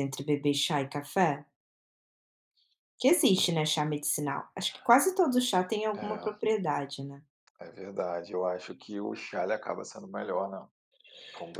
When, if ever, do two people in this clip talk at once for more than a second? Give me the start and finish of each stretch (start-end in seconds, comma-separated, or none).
none